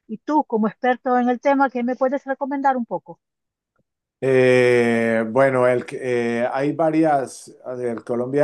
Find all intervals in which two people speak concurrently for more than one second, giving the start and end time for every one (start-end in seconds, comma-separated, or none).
none